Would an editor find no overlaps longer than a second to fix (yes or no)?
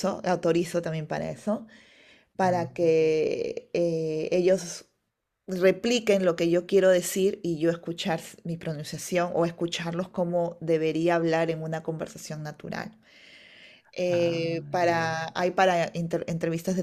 no